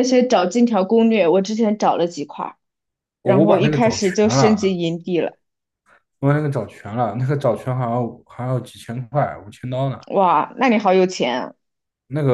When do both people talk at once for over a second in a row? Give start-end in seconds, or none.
3.2-4.8